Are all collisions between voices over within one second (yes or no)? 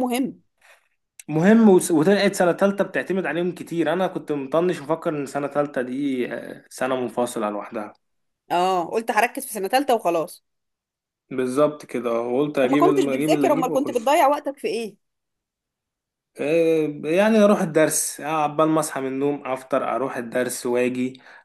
no